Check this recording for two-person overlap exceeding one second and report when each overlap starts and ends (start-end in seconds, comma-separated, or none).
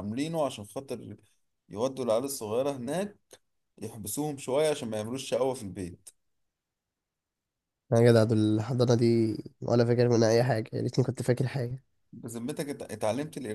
none